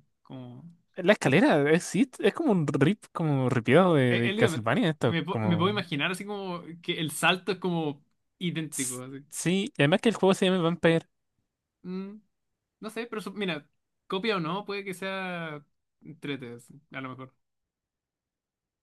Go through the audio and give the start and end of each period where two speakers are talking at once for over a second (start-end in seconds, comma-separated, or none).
4.1-5.8